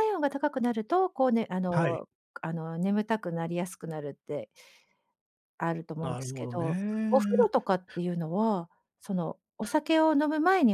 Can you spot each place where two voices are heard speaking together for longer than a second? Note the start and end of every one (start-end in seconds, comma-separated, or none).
6.0-7.5